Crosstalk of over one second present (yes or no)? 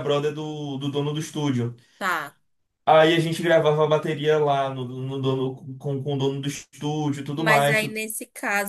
no